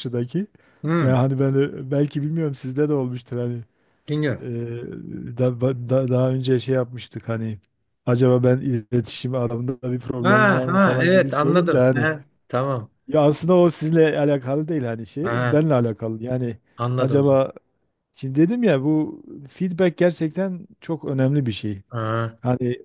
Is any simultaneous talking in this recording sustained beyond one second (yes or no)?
yes